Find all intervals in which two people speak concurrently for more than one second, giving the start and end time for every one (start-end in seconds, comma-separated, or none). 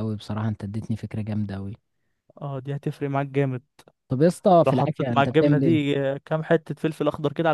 4.7-6.0